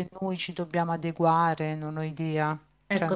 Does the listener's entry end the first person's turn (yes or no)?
yes